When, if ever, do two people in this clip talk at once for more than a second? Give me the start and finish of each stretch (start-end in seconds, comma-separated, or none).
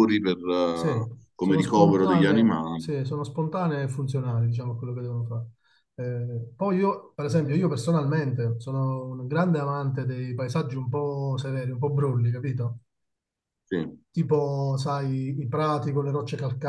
0.7-2.9